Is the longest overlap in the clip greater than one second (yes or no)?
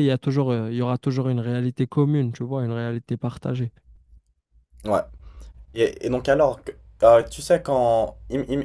no